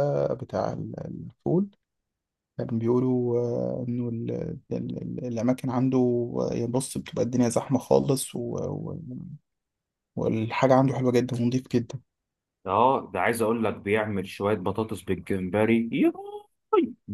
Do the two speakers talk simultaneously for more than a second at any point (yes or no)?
no